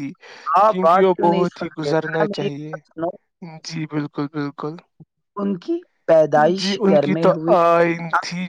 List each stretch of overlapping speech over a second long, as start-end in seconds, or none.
0.7-2.8